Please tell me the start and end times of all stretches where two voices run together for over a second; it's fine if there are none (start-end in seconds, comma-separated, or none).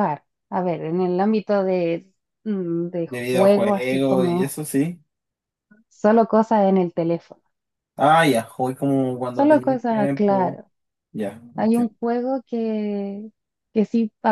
3.0-4.5, 9.3-10.6